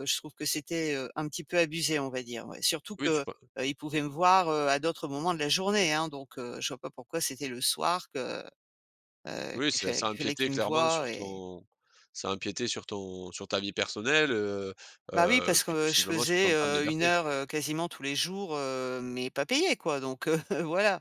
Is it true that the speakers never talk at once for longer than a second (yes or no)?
no